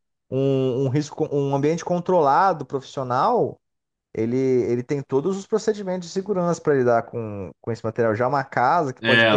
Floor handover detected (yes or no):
no